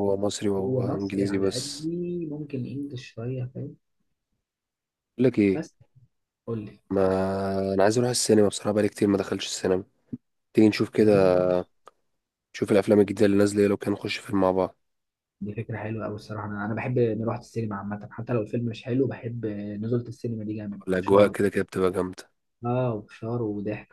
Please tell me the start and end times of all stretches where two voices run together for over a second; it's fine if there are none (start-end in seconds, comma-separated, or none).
0.6-1.9